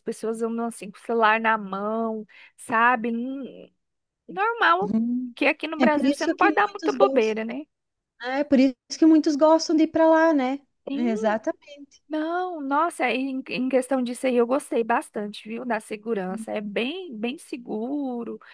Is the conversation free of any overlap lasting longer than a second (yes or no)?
no